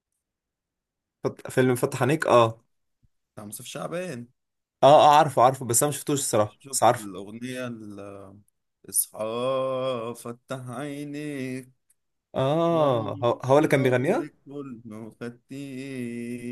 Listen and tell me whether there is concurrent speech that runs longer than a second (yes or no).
yes